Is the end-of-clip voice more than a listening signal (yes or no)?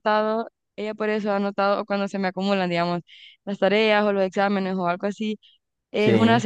no